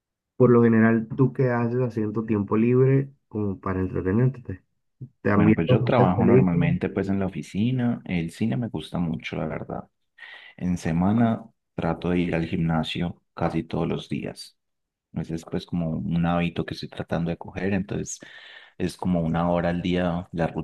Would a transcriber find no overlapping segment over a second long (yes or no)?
no